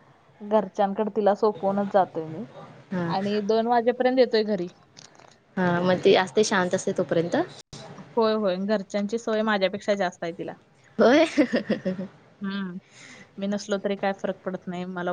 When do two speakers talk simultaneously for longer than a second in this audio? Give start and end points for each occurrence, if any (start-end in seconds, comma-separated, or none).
none